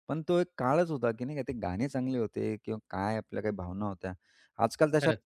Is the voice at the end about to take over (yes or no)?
no